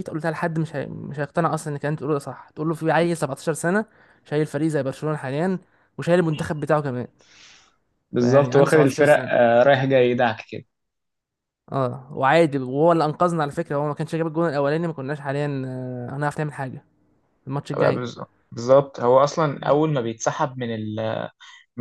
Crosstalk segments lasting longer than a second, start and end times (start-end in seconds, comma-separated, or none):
8.2-9.4